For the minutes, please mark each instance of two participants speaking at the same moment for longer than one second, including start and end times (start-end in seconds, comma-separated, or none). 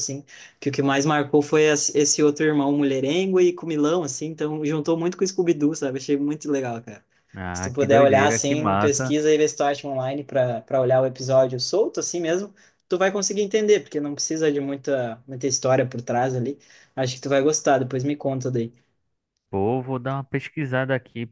7.5-9.1